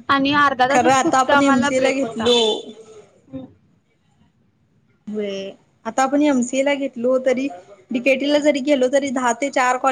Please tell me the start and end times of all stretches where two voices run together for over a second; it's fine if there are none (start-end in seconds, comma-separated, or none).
0.7-2.3